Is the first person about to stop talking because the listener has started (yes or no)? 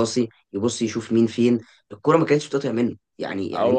no